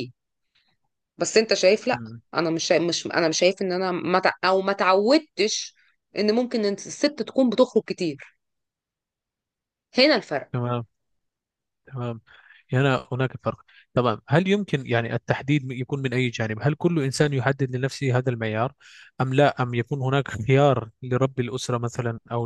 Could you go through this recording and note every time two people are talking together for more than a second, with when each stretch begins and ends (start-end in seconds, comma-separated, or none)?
none